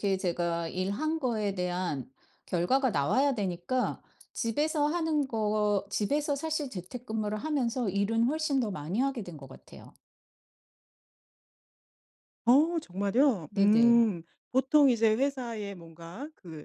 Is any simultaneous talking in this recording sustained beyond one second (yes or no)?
no